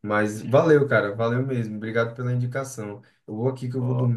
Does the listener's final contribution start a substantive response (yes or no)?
no